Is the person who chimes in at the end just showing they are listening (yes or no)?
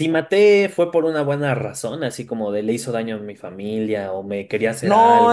no